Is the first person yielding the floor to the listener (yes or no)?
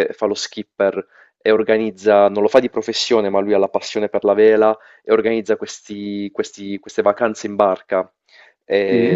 no